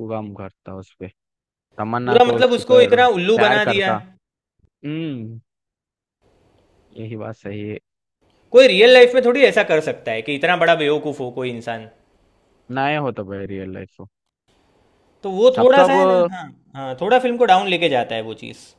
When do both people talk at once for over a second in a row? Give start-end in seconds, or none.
2.0-3.9